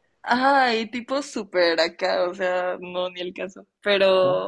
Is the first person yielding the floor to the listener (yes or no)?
no